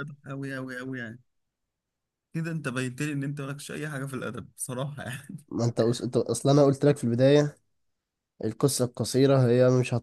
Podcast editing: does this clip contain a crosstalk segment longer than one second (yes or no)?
no